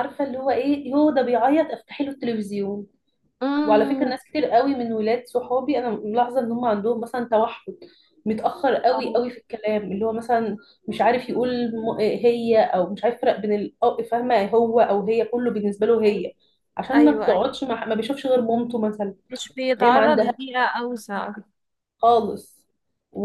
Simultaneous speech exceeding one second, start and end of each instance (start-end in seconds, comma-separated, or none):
none